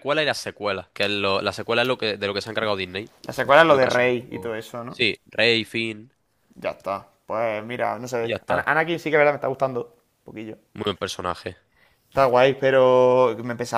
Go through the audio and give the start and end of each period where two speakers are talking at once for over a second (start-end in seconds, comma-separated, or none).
3.6-5.0